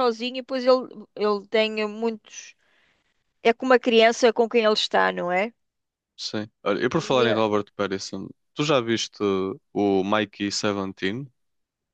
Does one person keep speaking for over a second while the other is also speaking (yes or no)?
no